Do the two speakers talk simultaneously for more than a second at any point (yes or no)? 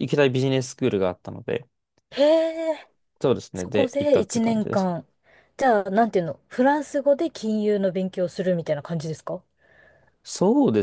yes